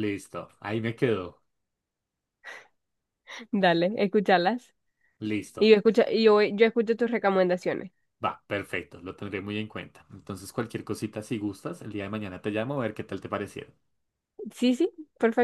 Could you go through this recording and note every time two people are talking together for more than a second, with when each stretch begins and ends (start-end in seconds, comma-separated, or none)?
none